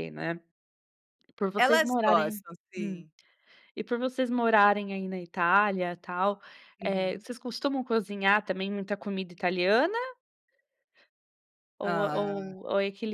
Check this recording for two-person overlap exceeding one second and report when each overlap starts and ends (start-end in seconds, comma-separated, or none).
1.6-3.0